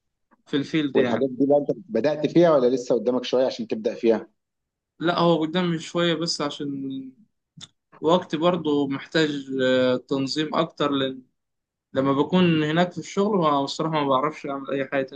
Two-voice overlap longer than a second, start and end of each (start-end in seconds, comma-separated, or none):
none